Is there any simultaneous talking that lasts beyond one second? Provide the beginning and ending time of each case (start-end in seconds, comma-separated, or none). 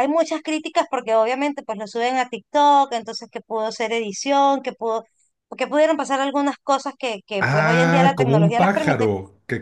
7.4-9.1